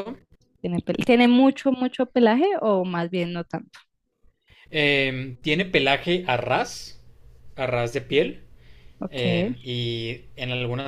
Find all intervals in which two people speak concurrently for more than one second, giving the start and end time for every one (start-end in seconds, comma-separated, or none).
none